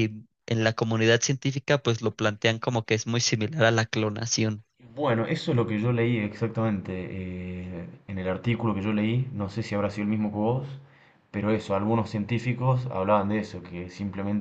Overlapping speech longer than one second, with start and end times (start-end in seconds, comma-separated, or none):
none